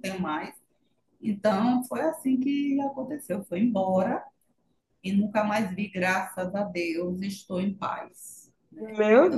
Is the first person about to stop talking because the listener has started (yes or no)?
yes